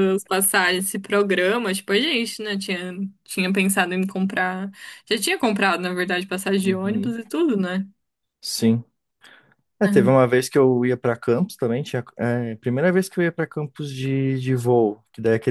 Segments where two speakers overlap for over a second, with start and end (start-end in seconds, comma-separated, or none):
none